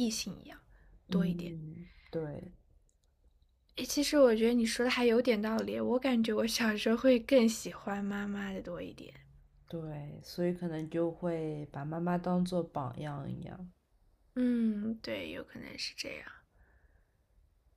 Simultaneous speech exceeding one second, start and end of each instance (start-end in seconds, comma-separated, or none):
none